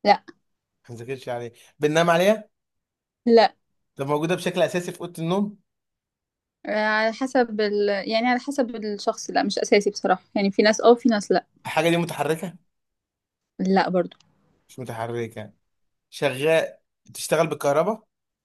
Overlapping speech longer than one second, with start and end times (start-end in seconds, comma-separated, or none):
none